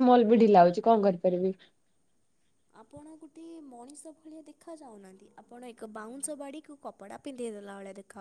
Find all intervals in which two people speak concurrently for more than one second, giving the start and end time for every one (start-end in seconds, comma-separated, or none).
none